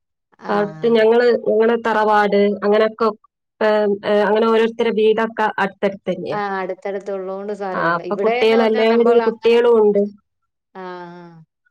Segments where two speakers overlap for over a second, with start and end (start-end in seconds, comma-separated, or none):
7.8-9.6